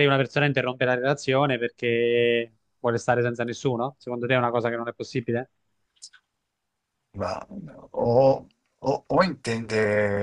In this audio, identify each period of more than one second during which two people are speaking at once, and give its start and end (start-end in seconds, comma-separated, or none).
none